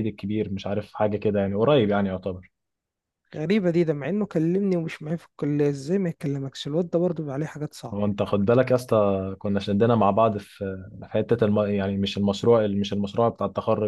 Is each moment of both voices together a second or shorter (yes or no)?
yes